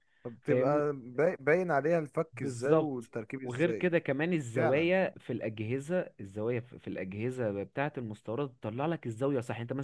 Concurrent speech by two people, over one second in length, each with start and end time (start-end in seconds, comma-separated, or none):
2.3-3.9